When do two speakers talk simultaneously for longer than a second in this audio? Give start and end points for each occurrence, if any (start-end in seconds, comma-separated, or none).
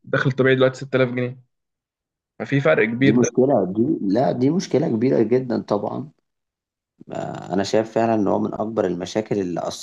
none